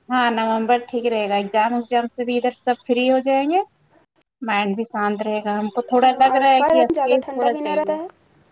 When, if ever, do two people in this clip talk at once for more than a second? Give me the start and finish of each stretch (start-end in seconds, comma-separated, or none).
6.3-8.0